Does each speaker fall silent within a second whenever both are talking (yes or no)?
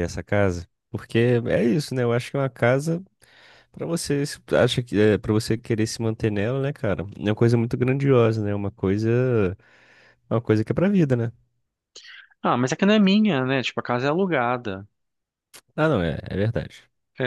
yes